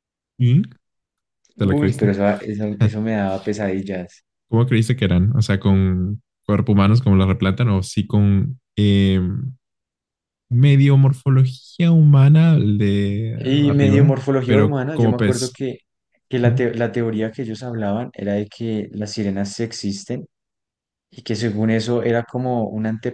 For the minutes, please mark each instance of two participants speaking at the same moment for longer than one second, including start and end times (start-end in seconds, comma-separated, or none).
13.3-15.5